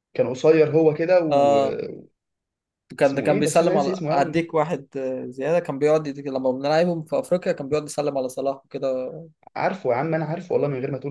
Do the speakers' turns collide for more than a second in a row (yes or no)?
yes